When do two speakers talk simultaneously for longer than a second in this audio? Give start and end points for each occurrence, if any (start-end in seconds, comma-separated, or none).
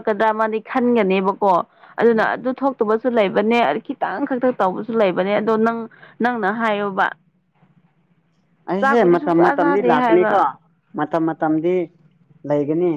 8.8-10.4